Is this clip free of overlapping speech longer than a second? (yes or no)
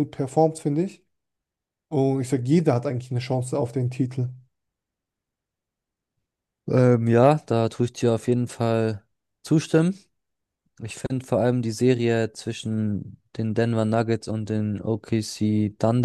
yes